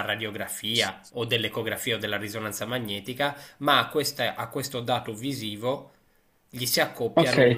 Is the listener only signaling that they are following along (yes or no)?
no